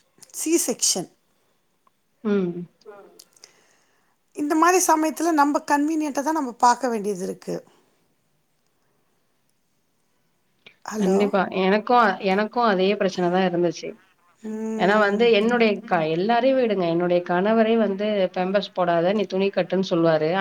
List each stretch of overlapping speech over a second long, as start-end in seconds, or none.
none